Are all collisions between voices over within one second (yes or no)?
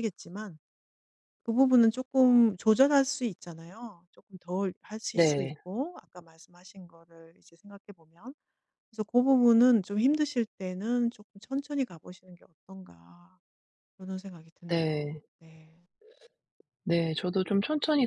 yes